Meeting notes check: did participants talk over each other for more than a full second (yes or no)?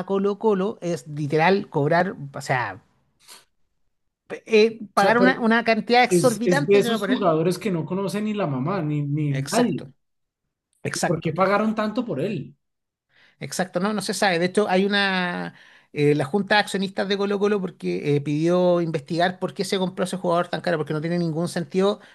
yes